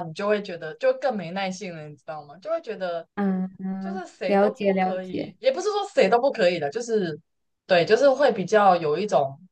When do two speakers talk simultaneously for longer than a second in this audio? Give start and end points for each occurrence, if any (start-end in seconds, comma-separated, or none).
3.8-5.3